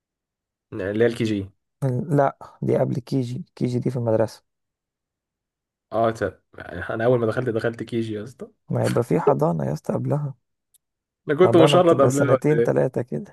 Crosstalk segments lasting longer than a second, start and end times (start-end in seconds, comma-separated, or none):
11.4-12.8